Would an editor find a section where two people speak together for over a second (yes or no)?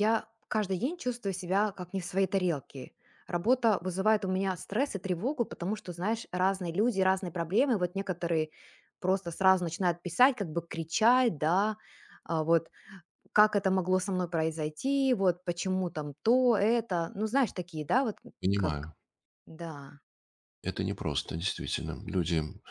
no